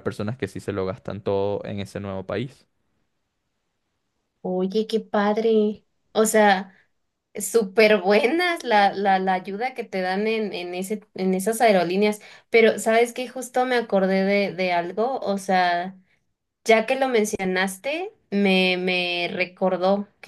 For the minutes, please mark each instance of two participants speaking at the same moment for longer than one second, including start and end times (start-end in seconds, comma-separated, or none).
none